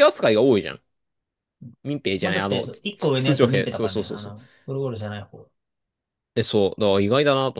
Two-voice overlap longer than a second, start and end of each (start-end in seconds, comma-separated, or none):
2.2-4.3